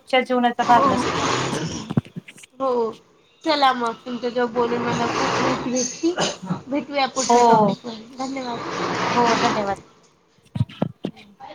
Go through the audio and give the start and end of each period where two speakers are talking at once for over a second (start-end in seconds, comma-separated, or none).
none